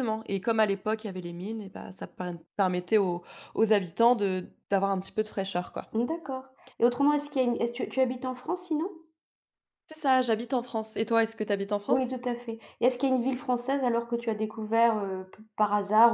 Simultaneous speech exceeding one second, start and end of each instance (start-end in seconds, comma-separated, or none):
none